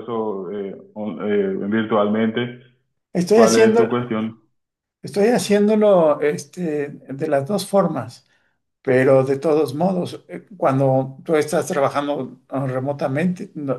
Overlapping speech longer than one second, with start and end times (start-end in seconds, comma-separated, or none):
none